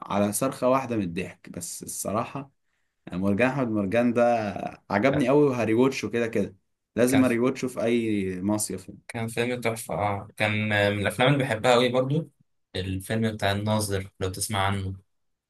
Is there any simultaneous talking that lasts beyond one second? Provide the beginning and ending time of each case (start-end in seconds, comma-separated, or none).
none